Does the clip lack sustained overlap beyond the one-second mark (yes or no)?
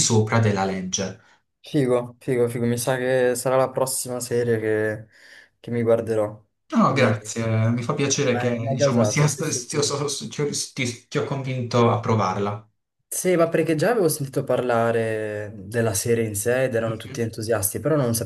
no